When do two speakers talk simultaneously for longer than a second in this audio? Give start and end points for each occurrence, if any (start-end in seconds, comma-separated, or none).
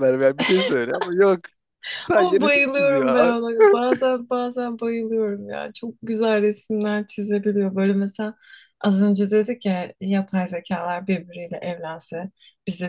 2.1-3.4